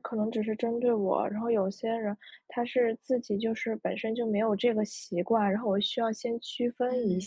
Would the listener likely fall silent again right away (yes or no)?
no